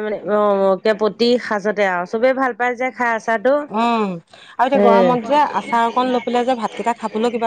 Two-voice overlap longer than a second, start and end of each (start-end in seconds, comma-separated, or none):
none